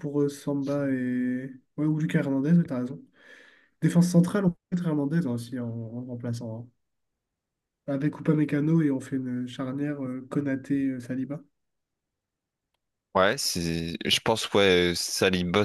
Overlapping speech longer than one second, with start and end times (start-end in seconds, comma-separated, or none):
none